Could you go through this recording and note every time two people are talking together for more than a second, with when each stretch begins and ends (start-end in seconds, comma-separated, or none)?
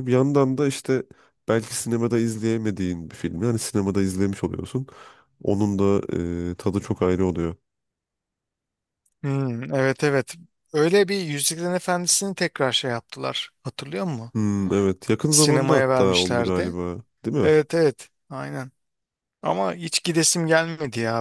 15.3-16.7